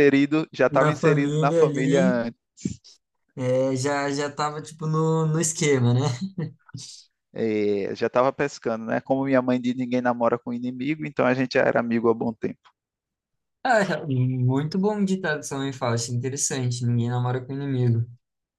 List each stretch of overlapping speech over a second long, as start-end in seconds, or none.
0.8-2.2